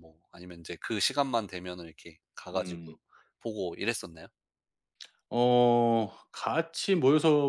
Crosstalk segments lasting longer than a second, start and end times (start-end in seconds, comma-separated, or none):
none